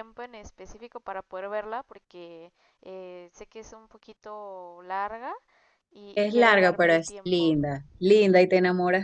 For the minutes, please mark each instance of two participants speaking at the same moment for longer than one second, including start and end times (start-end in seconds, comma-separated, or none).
6.1-7.5